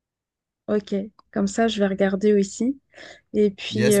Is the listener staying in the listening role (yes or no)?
no